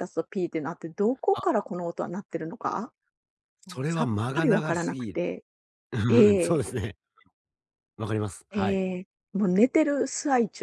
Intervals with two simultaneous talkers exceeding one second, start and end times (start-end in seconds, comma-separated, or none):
3.7-5.2